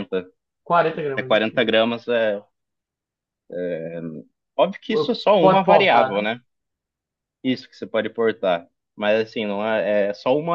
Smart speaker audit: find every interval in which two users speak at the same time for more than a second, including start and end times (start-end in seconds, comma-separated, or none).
4.9-6.2